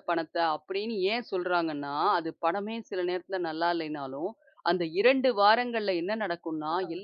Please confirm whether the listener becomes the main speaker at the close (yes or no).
no